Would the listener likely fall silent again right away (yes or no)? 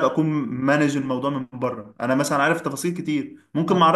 yes